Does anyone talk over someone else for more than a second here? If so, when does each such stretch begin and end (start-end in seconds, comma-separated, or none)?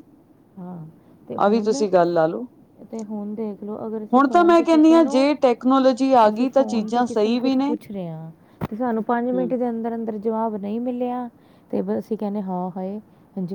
6.3-7.7